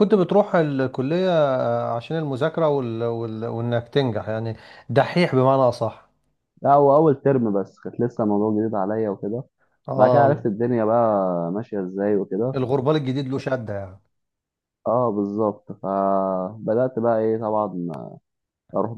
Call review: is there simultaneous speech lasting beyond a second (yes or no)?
no